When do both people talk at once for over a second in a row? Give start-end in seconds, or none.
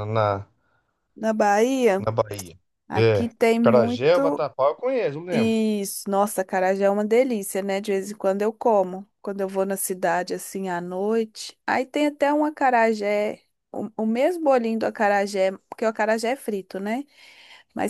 3.0-4.4